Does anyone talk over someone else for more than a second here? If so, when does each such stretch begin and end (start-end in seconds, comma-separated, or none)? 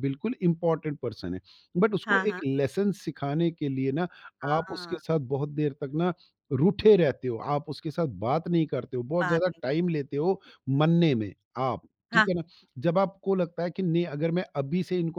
none